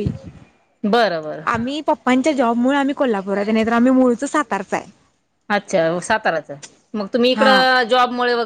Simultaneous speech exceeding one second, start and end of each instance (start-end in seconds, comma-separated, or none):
none